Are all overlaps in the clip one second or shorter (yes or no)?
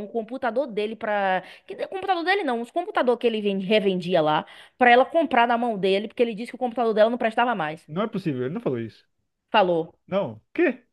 yes